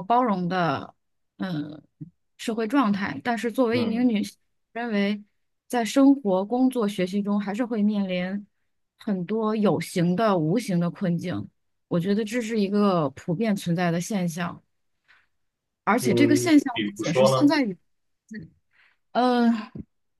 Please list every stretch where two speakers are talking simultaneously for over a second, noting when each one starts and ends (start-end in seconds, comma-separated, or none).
16.0-17.5